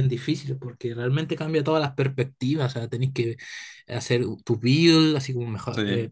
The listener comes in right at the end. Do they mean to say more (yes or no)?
no